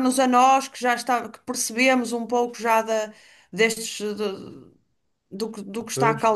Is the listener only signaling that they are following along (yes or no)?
yes